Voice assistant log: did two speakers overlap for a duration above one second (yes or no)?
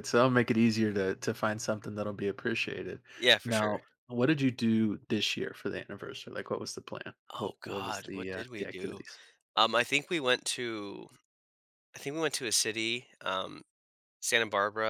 yes